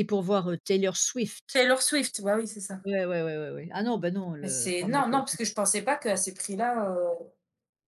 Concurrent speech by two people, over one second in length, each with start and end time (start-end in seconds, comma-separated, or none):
4.4-5.6